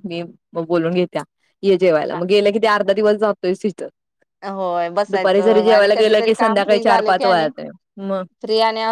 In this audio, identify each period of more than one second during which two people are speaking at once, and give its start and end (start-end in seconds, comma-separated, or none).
5.1-7.5